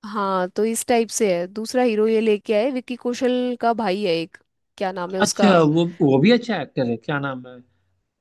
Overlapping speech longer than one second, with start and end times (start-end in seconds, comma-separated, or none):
none